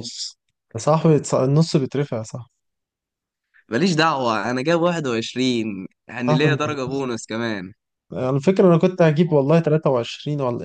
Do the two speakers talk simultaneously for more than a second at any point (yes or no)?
no